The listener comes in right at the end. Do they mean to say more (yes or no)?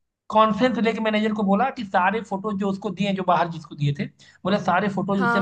no